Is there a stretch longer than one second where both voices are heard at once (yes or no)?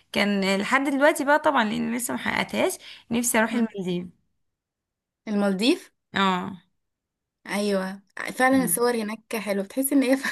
no